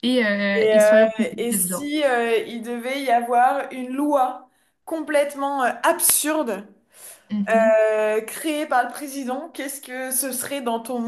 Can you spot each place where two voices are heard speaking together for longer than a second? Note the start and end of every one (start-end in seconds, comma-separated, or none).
0.5-1.9